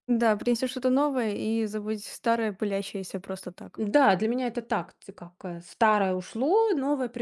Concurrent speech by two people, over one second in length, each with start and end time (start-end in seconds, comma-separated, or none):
none